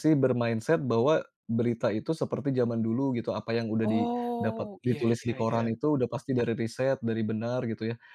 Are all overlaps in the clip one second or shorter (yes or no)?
no